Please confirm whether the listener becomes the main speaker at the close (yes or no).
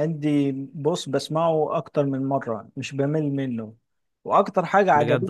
no